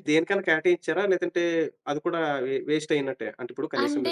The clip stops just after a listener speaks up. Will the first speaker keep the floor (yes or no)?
no